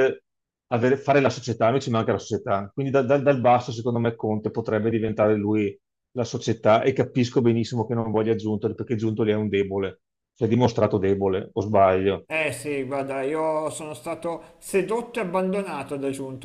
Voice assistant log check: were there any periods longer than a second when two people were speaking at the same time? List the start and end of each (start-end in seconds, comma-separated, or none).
none